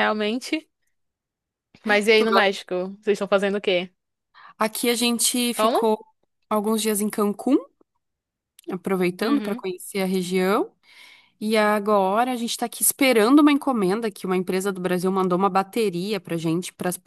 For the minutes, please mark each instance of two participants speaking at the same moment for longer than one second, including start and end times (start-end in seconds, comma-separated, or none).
none